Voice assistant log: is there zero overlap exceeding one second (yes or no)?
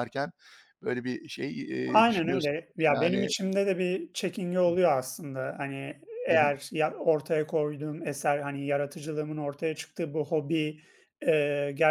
no